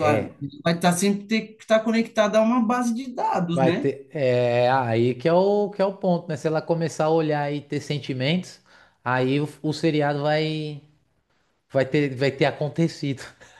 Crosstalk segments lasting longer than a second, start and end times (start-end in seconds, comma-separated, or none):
none